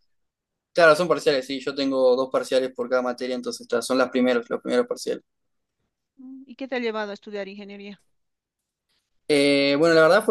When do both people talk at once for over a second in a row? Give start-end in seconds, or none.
none